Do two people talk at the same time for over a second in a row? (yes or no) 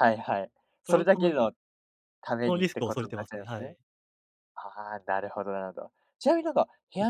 yes